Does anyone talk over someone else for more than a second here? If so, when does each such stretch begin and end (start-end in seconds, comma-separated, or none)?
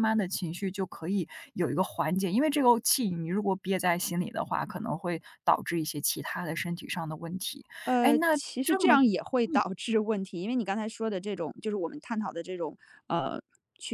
8.0-9.6